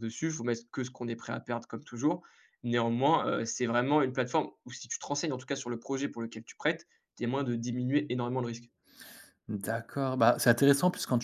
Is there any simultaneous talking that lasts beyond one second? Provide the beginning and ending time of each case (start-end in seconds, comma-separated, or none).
none